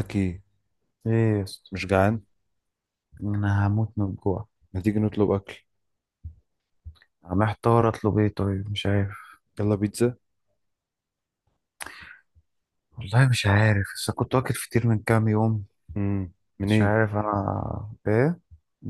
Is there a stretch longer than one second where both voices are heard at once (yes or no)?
no